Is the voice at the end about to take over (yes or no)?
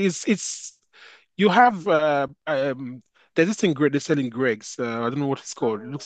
no